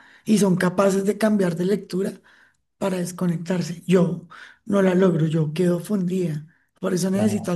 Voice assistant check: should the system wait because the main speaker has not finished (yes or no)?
yes